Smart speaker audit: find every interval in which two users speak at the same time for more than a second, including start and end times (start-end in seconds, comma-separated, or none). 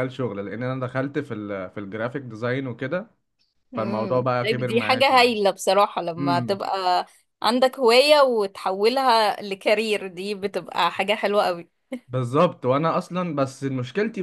3.8-5.3